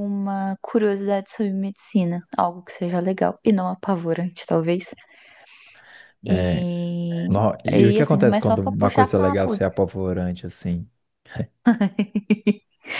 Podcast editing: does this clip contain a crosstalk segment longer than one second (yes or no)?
yes